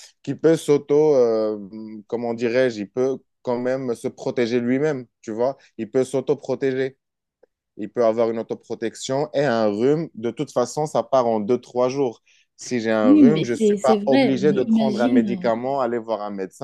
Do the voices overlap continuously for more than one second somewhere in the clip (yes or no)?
yes